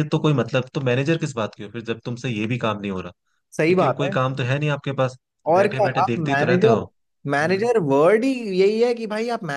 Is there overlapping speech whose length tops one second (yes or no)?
yes